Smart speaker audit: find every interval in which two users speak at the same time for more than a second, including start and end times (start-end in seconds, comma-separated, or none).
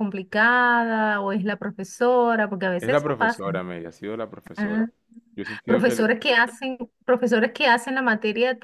none